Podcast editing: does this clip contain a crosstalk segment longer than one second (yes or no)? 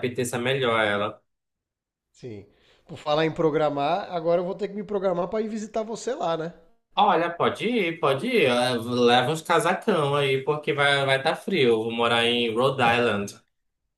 no